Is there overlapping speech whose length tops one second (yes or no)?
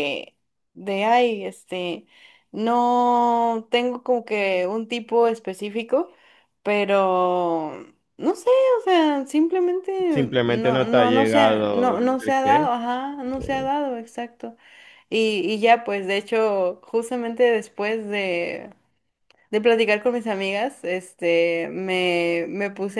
yes